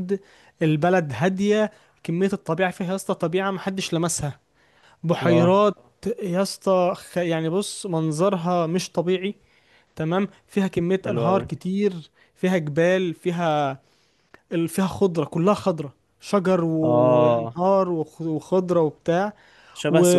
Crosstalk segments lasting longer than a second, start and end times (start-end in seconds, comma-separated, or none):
none